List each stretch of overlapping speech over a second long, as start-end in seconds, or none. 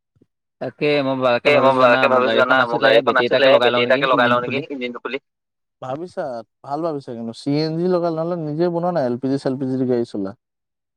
1.5-4.6